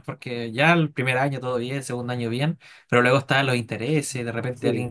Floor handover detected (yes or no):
no